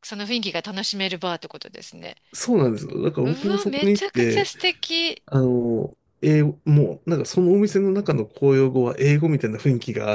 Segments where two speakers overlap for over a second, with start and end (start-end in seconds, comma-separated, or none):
3.2-4.5